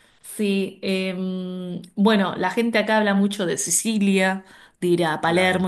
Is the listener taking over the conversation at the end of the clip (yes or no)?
no